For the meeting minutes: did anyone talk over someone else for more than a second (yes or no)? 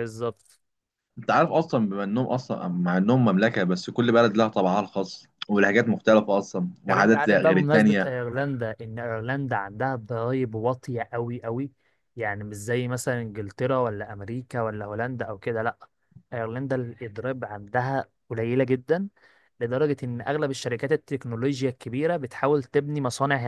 yes